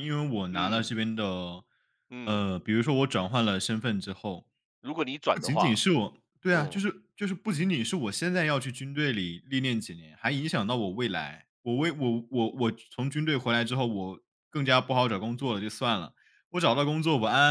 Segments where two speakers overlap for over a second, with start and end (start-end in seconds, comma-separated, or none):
none